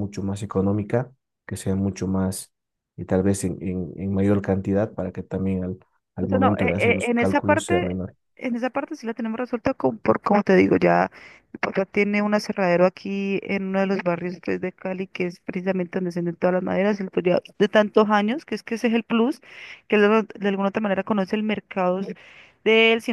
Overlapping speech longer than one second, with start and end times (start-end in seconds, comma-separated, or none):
6.2-8.0